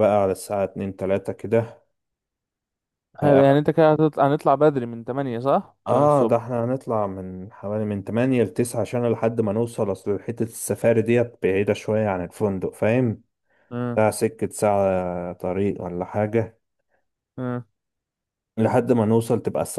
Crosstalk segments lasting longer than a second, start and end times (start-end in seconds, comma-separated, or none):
none